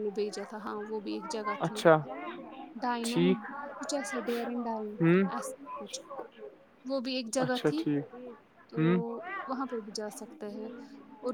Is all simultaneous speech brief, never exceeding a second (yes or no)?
yes